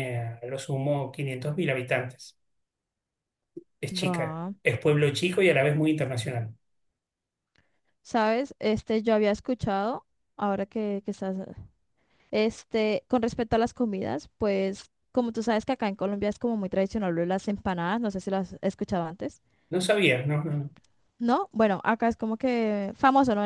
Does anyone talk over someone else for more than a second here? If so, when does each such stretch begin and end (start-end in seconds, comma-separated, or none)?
none